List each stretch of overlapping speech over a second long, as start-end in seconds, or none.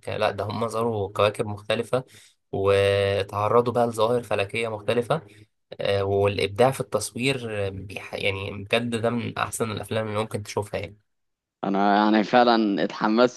none